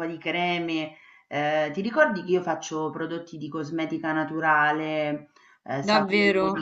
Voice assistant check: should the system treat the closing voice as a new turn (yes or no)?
yes